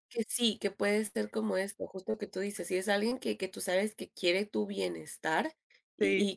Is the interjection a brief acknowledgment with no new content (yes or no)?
yes